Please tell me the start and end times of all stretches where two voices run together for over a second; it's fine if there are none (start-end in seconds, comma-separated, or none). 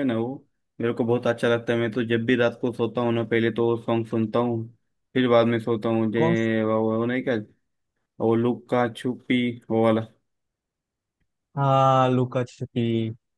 none